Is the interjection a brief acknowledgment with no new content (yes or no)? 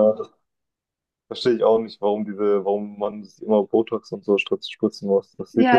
no